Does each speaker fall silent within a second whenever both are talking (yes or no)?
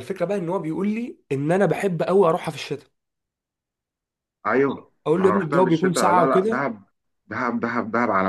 no